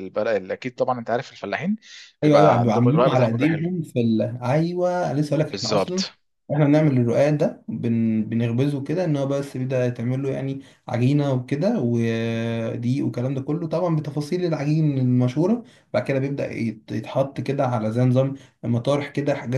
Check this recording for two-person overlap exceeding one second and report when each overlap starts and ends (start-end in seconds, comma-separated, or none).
2.2-3.6